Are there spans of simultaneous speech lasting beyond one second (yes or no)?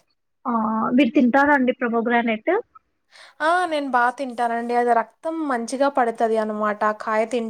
no